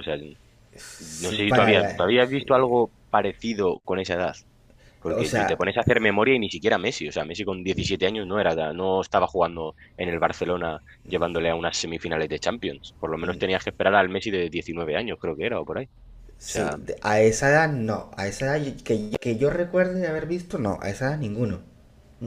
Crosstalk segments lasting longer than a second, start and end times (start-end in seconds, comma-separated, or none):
1.0-2.7